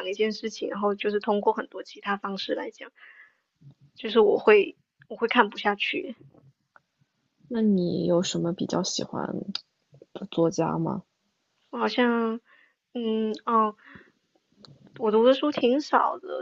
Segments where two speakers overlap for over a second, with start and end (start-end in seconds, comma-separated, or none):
none